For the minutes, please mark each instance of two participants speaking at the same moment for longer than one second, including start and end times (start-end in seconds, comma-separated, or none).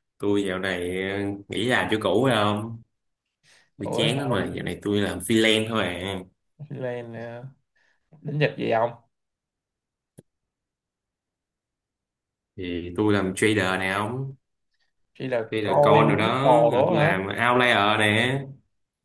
15.5-17.2